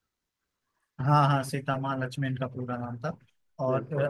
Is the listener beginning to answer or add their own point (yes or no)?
no